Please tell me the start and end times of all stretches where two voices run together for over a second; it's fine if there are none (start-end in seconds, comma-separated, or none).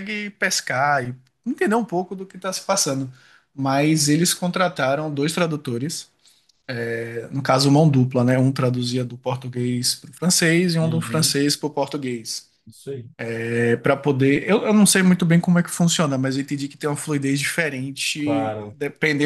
none